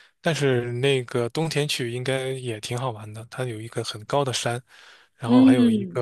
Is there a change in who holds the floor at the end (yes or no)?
no